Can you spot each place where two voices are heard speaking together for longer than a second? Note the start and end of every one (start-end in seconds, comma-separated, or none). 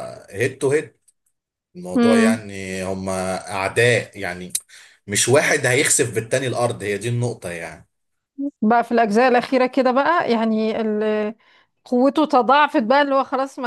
none